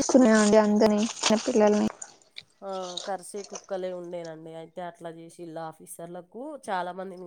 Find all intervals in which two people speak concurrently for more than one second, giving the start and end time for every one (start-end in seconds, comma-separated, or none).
none